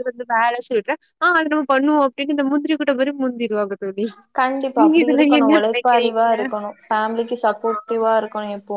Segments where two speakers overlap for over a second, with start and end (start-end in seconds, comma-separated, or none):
4.8-6.3